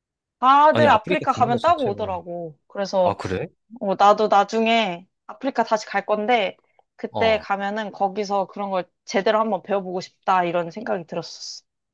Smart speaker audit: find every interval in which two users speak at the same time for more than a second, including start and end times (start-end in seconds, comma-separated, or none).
0.7-2.0